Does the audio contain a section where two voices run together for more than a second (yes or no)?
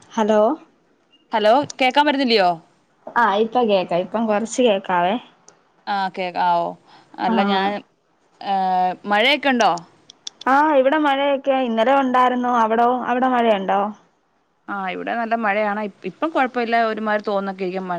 no